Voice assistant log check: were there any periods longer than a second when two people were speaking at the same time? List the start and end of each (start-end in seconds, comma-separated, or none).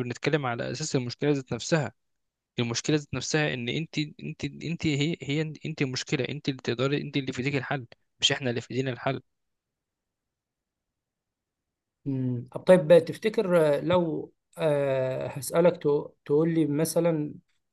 none